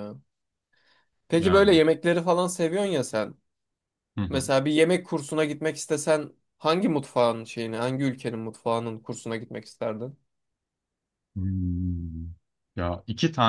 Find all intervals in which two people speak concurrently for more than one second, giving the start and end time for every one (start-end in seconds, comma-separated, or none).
none